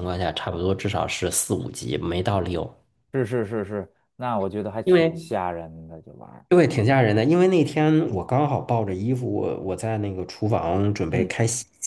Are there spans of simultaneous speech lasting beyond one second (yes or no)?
no